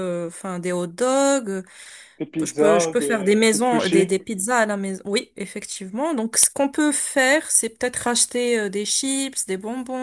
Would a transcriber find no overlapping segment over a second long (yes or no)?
no